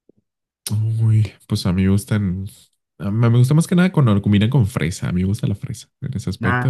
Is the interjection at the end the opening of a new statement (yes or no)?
yes